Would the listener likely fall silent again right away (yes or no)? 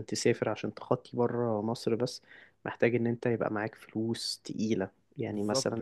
yes